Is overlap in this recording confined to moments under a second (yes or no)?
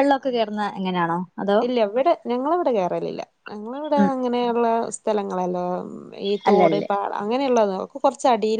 yes